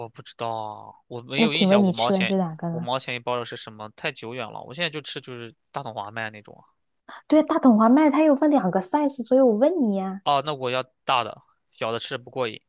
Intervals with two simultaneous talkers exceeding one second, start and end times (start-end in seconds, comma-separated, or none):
1.4-2.9